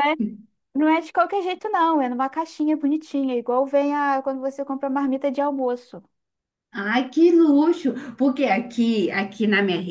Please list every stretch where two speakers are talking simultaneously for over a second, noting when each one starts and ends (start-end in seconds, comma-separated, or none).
none